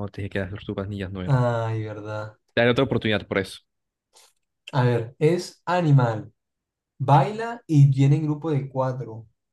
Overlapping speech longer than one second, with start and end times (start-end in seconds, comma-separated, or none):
none